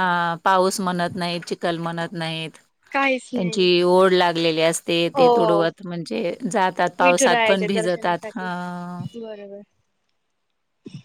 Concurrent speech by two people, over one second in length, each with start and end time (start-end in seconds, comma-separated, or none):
7.0-8.5